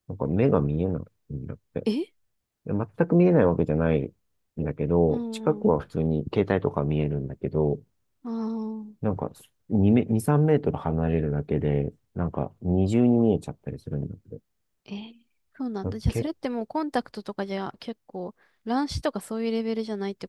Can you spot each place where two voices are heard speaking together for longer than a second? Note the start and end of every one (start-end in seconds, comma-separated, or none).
none